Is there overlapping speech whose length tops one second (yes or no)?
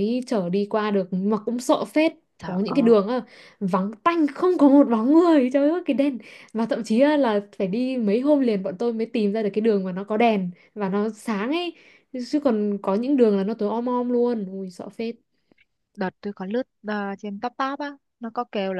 no